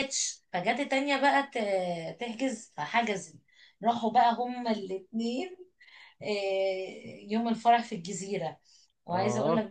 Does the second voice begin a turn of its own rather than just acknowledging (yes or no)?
no